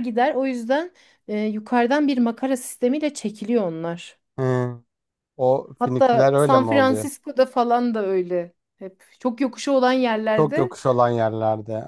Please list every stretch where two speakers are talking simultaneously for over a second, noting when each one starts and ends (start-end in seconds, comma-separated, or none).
5.8-7.1